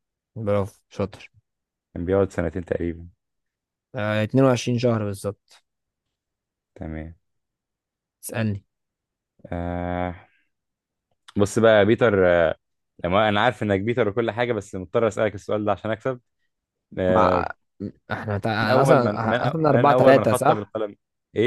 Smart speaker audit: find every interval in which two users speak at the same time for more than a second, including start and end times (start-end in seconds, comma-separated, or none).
18.6-20.7